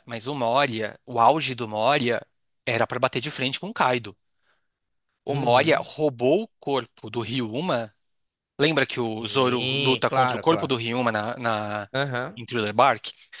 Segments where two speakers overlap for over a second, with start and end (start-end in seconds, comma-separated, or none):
8.9-10.8